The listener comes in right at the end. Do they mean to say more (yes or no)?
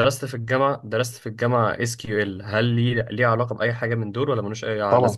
yes